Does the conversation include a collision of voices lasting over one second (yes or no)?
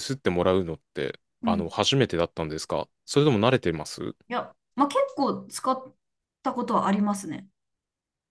no